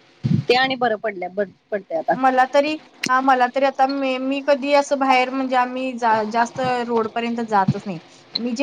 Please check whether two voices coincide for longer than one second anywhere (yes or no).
no